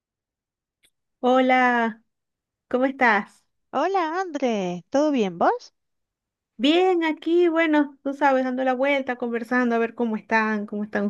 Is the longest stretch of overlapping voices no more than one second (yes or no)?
yes